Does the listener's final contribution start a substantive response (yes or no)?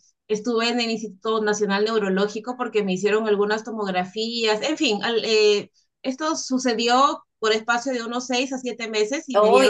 yes